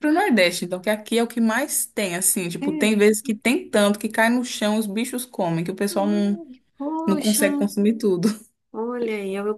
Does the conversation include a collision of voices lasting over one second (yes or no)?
no